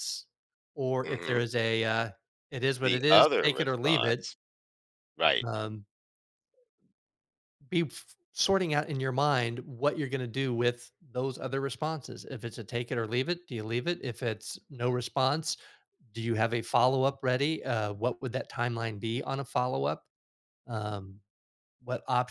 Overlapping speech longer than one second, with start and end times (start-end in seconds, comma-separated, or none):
2.8-4.3